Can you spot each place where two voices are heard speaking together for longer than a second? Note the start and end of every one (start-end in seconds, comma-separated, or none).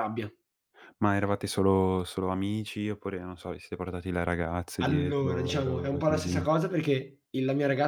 4.8-6.4